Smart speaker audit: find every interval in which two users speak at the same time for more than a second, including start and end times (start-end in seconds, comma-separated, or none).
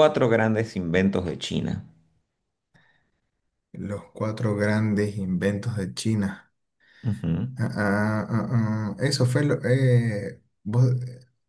none